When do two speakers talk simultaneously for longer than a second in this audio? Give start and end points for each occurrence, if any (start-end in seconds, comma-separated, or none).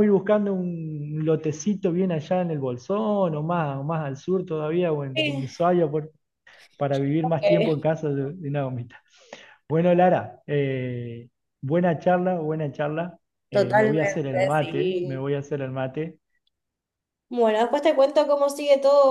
13.5-15.2